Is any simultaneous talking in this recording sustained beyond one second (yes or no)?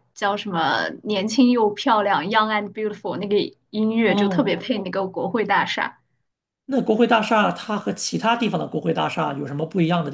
no